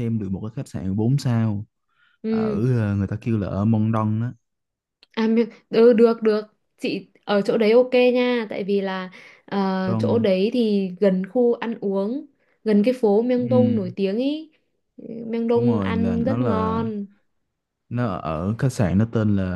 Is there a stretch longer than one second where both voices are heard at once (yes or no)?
yes